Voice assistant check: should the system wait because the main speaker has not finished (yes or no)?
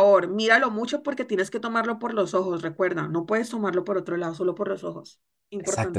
no